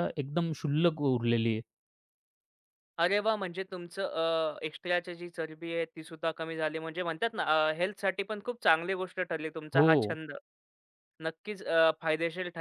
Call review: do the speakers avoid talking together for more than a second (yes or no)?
yes